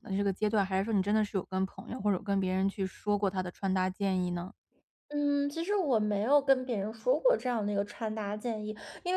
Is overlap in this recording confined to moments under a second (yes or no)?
yes